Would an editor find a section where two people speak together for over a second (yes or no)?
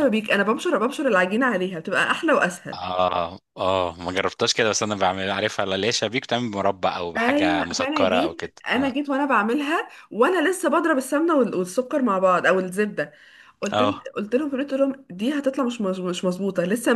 yes